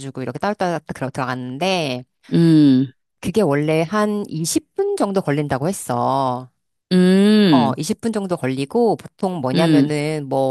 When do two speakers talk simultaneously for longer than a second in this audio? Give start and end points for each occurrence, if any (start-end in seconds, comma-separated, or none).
none